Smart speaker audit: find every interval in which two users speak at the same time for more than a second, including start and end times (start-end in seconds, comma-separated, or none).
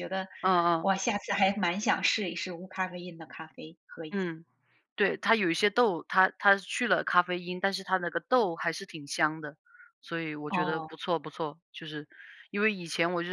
none